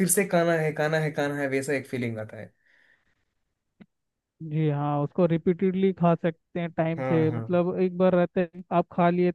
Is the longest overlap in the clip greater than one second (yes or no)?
no